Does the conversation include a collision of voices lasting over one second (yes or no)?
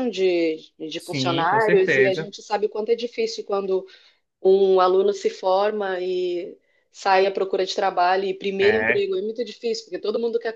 yes